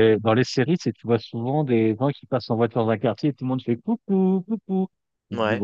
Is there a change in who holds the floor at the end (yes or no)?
no